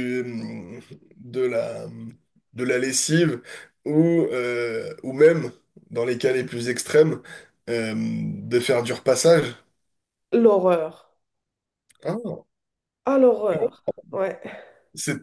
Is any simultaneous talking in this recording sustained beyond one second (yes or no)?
no